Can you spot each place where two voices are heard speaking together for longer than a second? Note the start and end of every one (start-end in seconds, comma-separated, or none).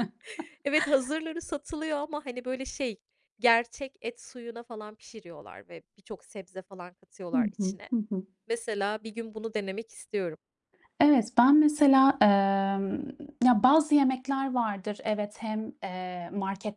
none